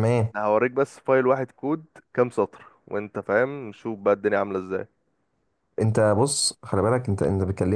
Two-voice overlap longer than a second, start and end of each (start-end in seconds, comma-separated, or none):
none